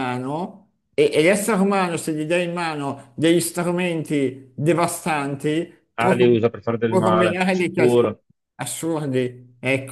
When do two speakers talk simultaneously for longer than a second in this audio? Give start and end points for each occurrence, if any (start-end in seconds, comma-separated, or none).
6.8-8.1